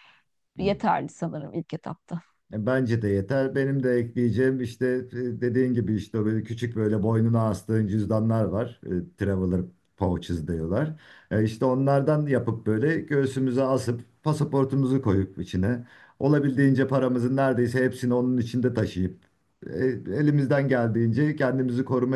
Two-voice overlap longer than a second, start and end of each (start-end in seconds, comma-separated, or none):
none